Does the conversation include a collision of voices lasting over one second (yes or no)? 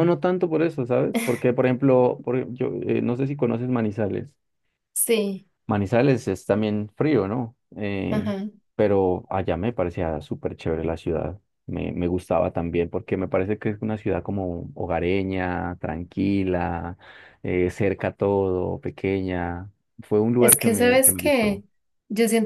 yes